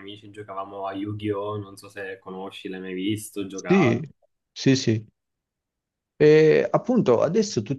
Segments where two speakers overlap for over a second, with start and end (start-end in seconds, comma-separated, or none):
none